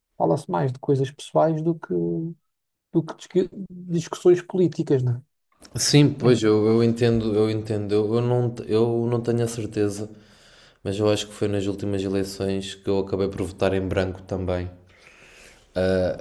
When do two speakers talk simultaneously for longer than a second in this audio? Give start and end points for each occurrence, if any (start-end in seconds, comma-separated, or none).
none